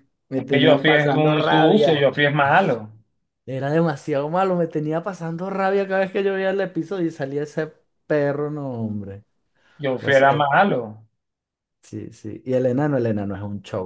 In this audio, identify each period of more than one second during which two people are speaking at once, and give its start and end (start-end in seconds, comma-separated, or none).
0.5-2.1